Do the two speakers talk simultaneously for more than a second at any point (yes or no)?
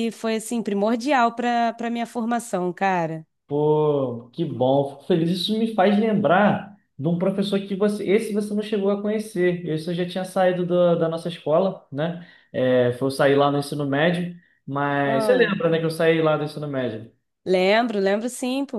no